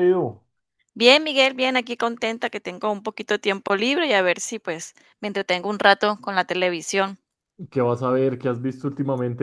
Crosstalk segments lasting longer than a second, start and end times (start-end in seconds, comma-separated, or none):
none